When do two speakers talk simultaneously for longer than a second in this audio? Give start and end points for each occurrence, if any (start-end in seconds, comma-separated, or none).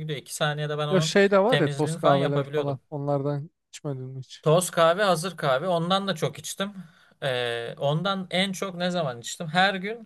0.9-2.8